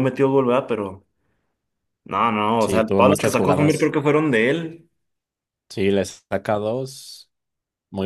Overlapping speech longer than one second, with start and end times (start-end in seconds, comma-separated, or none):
2.6-3.9